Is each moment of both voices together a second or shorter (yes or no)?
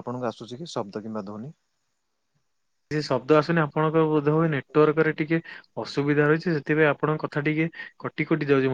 yes